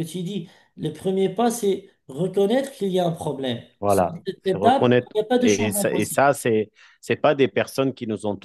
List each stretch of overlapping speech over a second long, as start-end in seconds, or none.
3.8-6.3